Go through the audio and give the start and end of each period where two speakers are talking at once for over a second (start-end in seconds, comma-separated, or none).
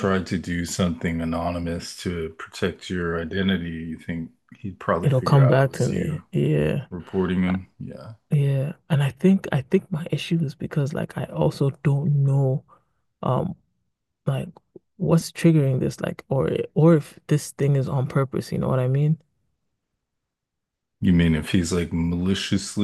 5.0-6.2